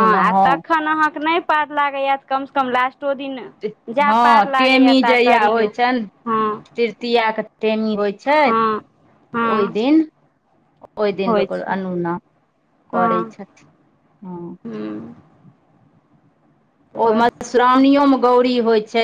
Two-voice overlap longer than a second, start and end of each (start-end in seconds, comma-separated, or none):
4.1-5.7